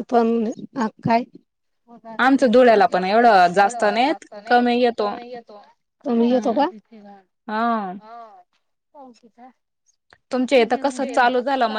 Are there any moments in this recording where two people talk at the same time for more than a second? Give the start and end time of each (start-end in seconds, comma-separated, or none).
2.6-5.1